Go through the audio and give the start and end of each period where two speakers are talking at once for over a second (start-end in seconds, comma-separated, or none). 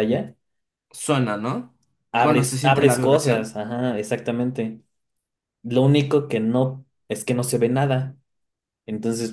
2.2-3.5